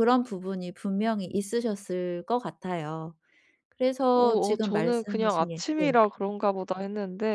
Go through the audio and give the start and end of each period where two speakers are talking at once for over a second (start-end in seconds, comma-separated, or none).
4.1-6.0